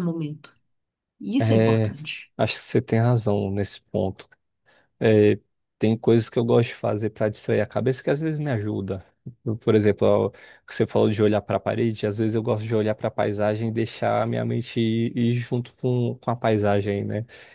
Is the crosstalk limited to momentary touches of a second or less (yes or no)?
yes